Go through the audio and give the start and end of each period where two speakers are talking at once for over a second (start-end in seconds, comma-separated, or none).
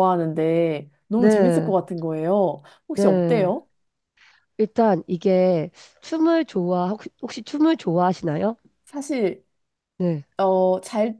none